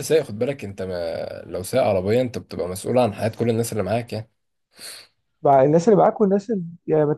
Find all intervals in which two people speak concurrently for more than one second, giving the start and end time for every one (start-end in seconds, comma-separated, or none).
none